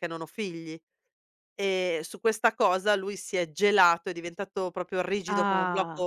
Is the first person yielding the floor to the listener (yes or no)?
no